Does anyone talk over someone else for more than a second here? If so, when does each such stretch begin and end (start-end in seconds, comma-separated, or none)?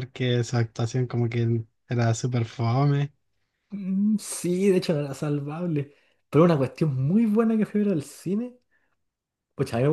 none